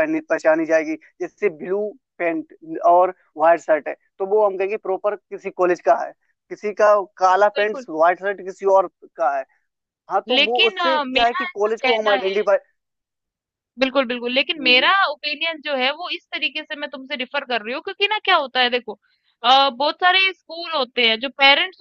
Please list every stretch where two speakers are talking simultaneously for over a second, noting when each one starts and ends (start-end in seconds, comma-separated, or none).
10.3-12.2